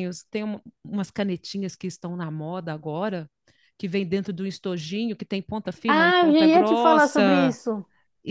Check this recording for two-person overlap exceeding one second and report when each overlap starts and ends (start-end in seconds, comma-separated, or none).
5.9-7.6